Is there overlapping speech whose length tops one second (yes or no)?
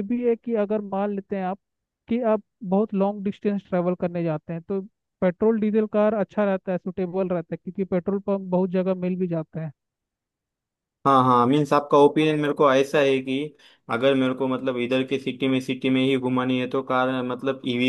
no